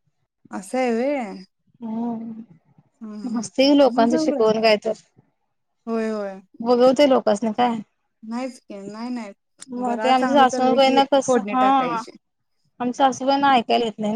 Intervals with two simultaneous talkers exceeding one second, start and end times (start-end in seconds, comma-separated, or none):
9.7-12.0